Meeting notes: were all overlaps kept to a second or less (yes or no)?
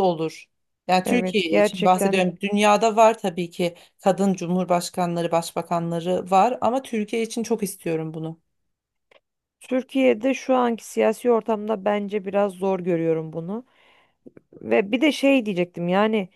no